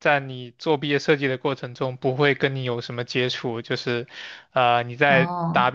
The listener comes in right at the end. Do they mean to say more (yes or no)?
no